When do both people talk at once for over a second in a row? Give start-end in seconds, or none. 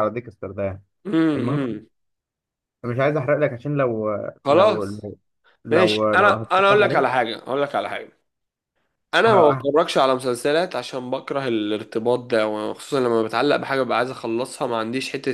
5.7-7.2